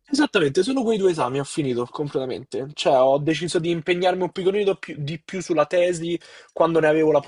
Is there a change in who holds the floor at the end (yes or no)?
no